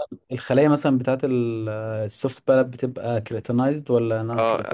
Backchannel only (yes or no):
no